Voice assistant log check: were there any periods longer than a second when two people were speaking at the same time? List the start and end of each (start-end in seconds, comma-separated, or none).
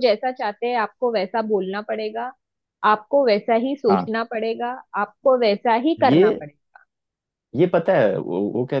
none